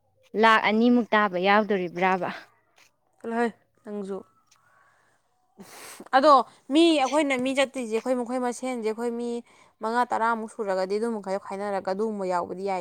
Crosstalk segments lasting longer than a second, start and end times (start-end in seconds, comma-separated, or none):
none